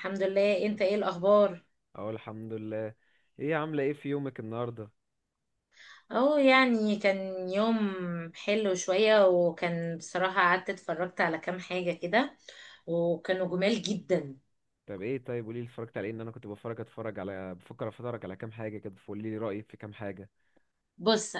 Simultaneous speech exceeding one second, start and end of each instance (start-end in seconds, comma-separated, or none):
none